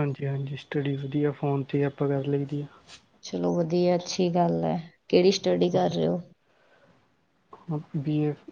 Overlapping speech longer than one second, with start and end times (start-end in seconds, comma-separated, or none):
none